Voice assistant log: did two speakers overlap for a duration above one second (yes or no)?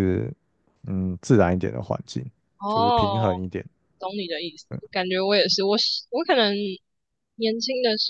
no